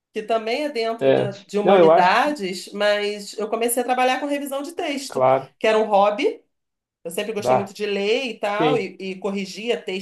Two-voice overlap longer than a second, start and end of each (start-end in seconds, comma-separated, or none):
1.0-2.4